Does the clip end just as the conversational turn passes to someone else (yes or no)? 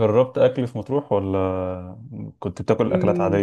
yes